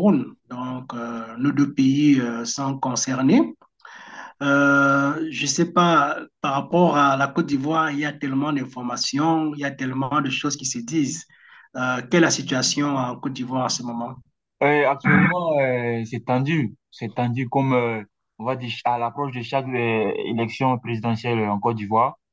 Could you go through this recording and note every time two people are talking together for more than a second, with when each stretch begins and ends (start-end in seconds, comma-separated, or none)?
none